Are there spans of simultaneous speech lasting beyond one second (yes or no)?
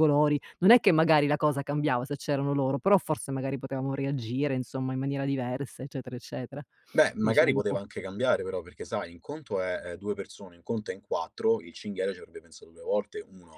no